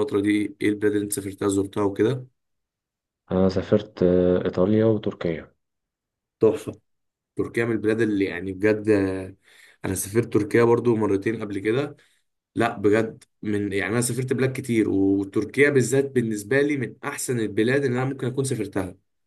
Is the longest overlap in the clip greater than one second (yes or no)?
no